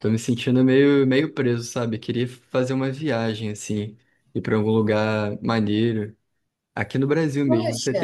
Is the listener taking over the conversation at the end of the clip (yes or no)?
no